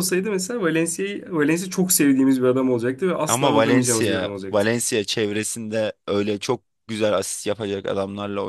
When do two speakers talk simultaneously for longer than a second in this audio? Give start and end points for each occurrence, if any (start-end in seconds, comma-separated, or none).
3.3-4.7